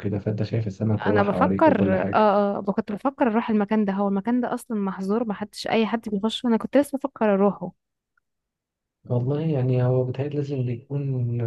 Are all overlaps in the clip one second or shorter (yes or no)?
no